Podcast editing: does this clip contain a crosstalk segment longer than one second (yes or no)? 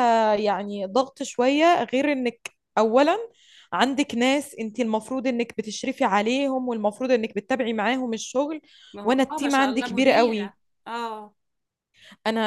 yes